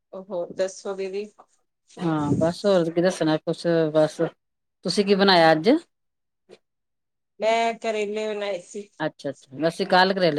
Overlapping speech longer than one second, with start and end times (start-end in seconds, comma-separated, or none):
none